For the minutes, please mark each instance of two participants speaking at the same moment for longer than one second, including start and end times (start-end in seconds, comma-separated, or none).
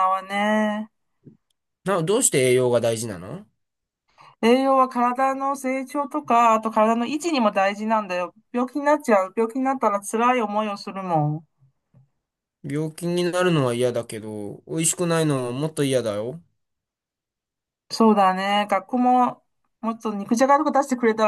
none